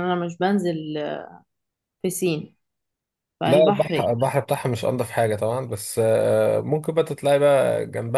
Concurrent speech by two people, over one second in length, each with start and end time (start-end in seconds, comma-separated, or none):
none